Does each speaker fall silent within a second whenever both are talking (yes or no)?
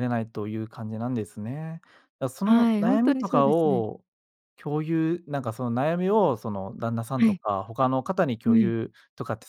no